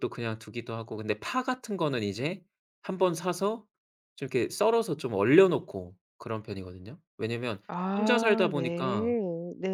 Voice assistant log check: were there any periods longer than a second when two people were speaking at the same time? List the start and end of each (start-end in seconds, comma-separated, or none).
8.0-9.2